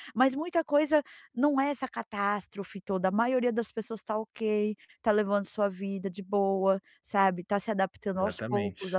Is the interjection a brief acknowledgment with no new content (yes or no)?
yes